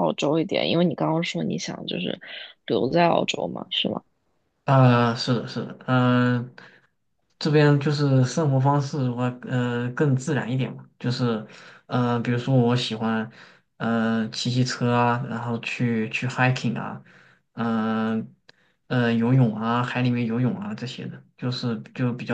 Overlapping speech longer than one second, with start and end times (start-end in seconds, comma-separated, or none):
none